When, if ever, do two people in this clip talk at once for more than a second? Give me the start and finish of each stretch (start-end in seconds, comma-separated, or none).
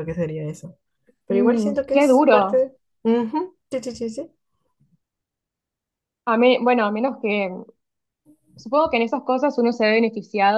1.3-2.7